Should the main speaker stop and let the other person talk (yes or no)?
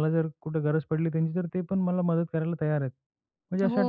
yes